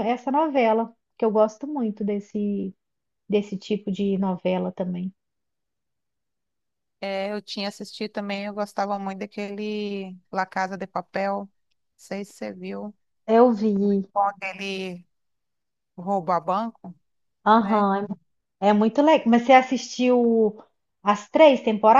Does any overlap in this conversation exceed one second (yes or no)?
no